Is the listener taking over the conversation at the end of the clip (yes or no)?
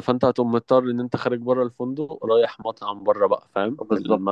yes